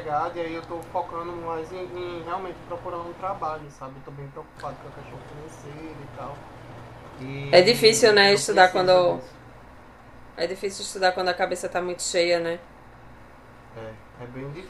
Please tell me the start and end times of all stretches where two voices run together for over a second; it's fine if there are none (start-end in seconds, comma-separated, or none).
7.5-9.2